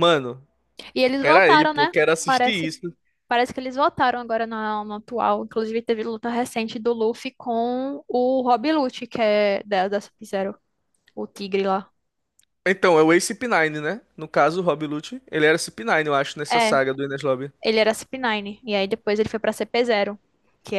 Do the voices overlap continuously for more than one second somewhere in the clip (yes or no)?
yes